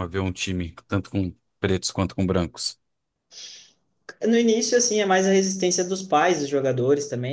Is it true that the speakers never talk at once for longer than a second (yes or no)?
yes